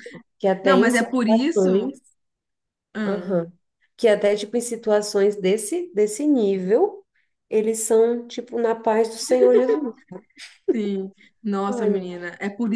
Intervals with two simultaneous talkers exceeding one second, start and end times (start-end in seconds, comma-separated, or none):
0.6-1.9